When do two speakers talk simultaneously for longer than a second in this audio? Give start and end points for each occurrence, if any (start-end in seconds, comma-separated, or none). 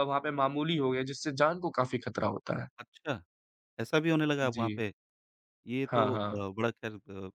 none